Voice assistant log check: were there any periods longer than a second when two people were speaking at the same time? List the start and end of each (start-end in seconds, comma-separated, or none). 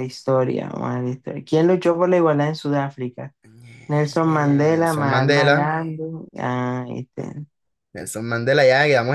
3.9-5.7